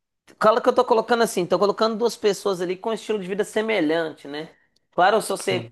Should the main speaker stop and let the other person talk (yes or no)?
no